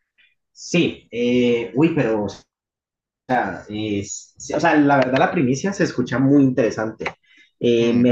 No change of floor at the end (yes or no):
yes